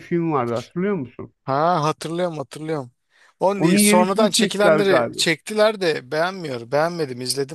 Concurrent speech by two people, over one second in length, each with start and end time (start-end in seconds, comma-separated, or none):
3.6-5.2